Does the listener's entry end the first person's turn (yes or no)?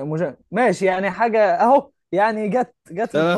yes